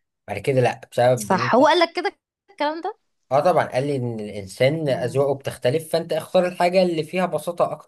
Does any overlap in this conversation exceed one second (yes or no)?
no